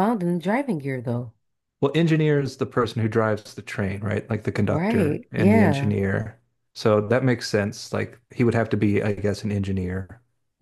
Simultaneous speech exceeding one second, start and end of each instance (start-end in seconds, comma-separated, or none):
4.6-5.9